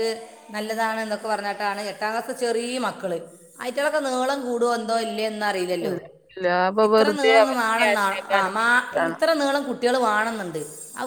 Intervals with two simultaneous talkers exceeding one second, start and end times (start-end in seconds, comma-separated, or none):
6.9-9.2